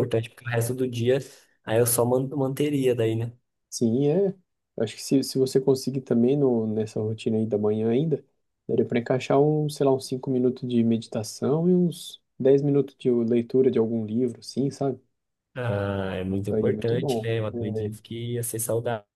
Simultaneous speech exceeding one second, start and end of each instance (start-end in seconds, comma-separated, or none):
16.5-17.9